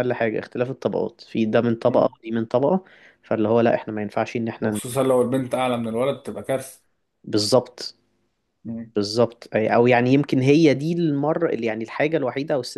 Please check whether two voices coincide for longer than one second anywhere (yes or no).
no